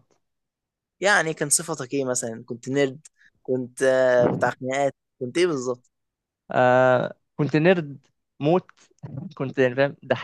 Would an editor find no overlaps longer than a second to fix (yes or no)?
yes